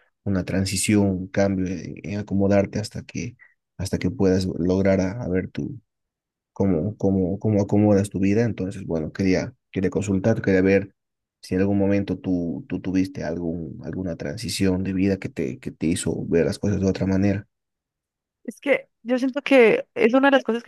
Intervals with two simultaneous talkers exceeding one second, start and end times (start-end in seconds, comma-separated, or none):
none